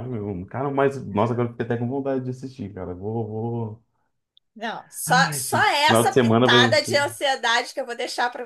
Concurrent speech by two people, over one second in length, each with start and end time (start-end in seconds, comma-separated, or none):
5.1-6.7